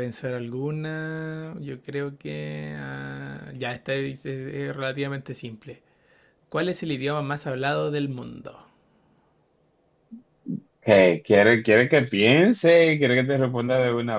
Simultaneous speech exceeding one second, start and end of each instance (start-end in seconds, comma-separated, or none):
none